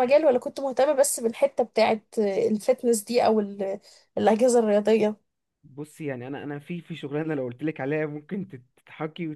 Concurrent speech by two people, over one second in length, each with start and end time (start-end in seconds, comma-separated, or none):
none